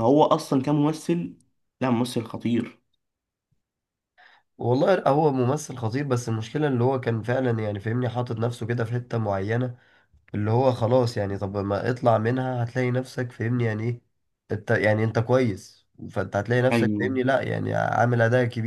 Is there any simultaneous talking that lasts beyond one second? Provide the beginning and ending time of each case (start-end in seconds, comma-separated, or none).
none